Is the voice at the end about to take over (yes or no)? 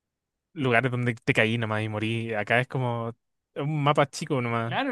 yes